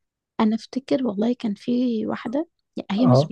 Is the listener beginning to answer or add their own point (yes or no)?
no